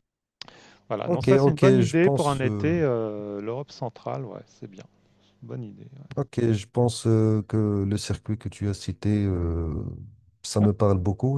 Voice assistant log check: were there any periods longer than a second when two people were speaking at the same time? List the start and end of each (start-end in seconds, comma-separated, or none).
1.0-2.8